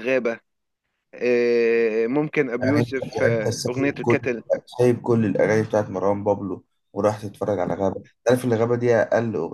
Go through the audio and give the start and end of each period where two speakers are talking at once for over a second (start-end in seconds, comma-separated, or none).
2.6-4.2